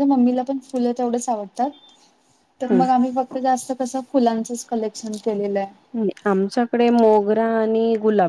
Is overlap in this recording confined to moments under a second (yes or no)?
yes